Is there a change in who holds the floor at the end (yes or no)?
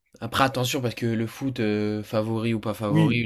yes